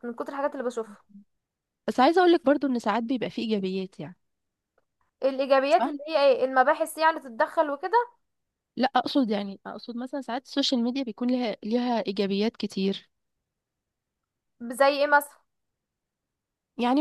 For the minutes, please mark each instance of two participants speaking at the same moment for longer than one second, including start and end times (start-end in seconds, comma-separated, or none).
none